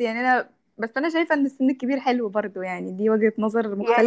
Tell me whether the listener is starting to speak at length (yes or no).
yes